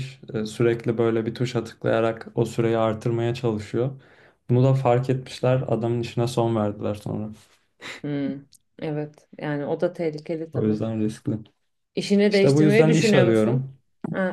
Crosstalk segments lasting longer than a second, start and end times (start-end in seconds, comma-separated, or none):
12.3-13.7